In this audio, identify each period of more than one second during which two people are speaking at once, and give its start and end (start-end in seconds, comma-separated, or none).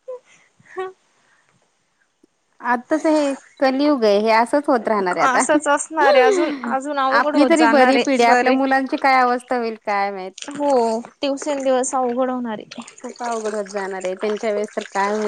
7.2-8.6